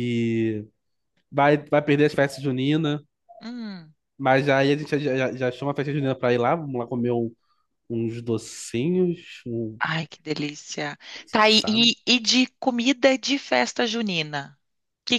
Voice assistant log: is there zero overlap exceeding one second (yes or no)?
yes